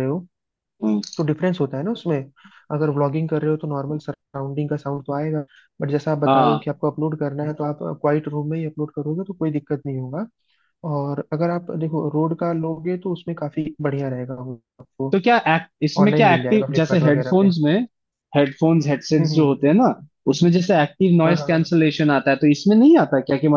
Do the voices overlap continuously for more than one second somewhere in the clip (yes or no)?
yes